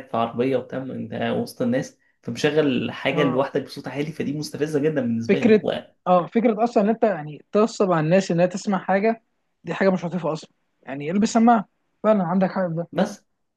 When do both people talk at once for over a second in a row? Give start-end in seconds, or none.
none